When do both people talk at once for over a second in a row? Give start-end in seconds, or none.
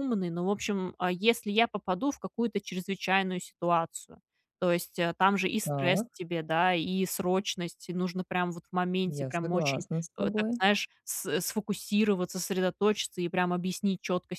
9.1-10.6